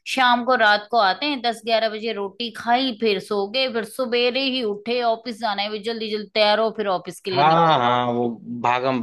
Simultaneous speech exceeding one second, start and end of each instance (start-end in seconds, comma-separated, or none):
none